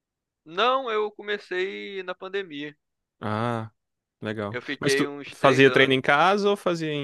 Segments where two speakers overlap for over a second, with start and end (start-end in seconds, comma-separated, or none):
4.5-6.0